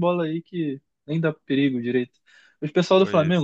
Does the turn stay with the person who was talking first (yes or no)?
yes